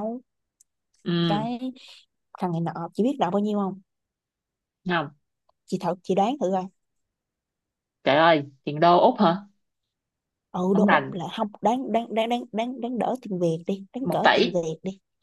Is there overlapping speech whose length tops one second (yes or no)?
no